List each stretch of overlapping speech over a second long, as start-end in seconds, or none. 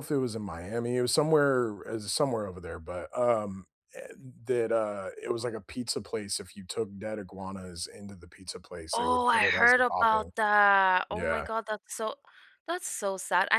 8.9-10.3